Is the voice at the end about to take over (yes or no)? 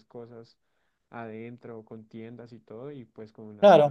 yes